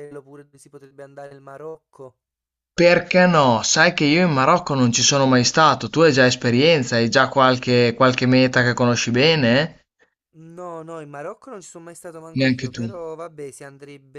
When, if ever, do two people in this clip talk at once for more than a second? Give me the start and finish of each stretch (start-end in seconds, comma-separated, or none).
none